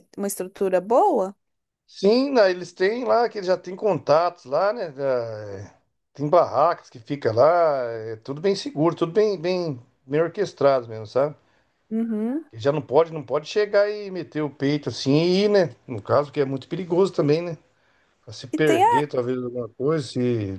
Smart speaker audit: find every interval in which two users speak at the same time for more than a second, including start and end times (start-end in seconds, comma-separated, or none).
none